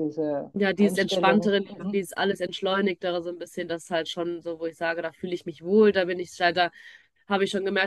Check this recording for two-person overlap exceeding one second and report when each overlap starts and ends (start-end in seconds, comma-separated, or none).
0.5-2.0